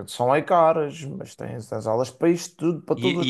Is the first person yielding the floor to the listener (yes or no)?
yes